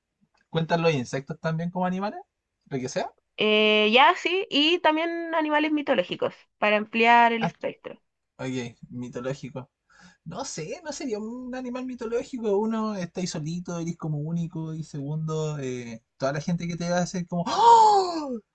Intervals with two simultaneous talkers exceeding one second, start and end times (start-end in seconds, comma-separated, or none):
none